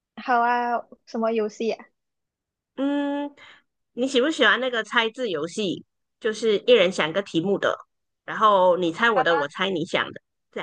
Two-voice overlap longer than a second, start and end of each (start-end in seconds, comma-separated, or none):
none